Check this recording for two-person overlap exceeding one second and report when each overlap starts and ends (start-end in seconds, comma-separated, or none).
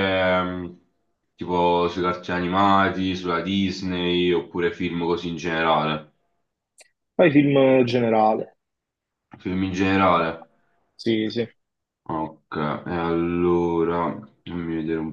none